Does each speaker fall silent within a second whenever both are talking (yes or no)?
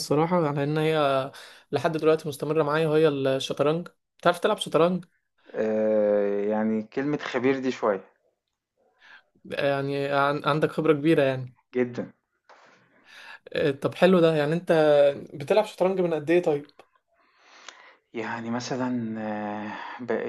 yes